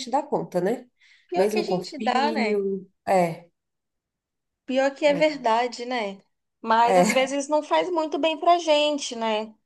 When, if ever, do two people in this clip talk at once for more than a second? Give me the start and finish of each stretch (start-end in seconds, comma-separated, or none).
1.3-2.6